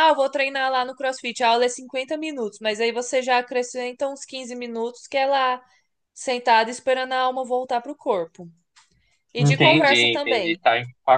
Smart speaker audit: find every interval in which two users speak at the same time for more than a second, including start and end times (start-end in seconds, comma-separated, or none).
9.4-10.6